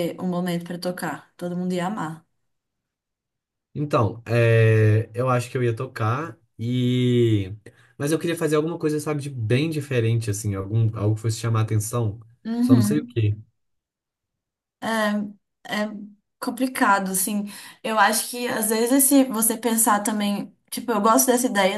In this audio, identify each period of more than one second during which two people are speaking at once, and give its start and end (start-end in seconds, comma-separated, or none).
none